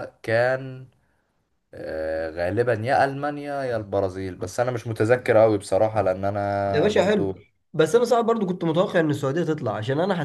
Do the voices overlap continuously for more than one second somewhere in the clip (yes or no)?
no